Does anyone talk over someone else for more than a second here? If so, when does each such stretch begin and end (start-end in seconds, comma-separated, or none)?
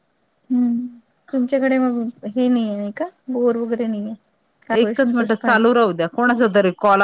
none